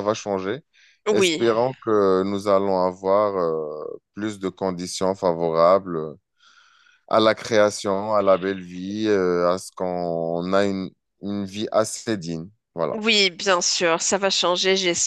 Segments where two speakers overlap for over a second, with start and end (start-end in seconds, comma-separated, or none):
none